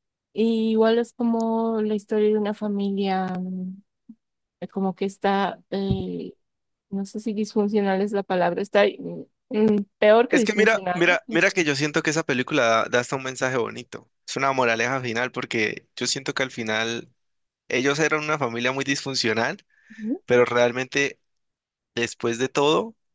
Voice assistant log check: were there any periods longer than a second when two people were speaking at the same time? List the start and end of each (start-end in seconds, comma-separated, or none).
10.3-11.5